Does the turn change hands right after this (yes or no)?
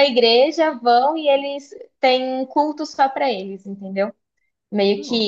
no